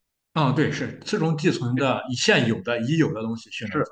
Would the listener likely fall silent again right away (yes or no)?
no